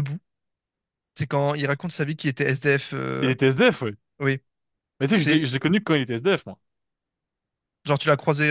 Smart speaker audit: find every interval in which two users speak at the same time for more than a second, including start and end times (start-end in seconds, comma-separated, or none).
none